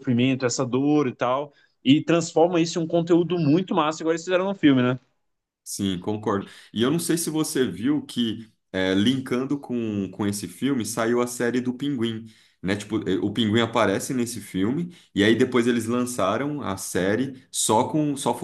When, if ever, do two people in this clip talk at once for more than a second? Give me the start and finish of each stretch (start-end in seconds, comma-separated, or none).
none